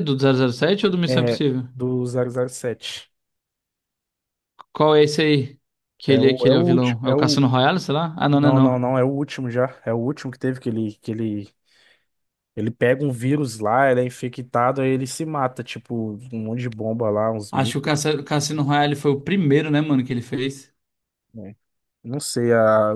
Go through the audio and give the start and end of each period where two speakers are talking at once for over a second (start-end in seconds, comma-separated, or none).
6.0-7.5